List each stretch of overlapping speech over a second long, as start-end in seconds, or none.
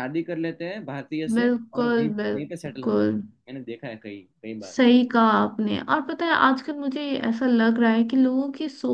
1.4-3.2